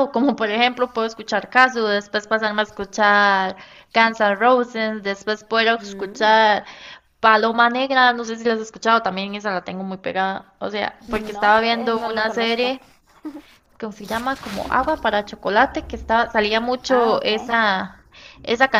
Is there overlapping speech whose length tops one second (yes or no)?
yes